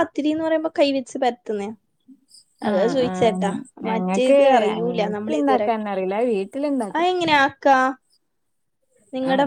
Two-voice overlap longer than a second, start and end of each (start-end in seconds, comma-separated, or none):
3.9-5.7